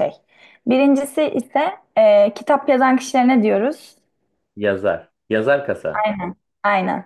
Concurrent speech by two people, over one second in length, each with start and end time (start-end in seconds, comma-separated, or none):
none